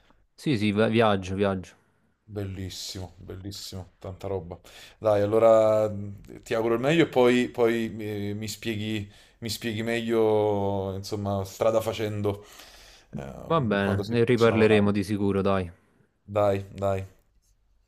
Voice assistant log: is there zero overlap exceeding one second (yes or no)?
no